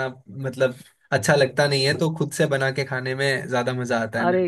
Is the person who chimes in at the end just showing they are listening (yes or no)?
no